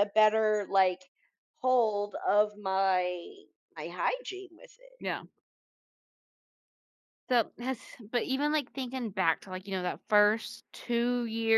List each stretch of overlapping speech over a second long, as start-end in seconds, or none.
none